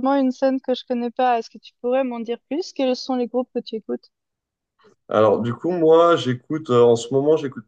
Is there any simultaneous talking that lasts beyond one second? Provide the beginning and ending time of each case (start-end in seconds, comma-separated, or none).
none